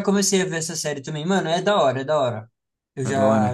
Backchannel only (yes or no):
yes